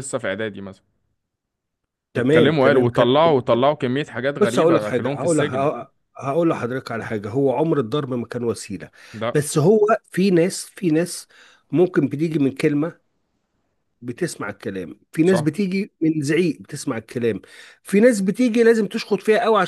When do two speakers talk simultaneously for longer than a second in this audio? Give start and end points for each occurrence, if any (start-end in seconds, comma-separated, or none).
2.2-3.7, 4.4-5.7